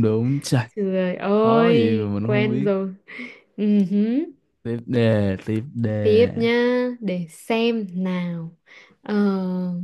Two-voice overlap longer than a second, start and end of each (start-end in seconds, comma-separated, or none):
1.3-2.7